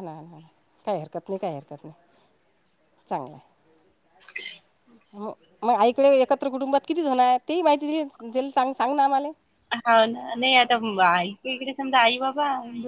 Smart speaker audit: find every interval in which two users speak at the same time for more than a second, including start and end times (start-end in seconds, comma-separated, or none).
none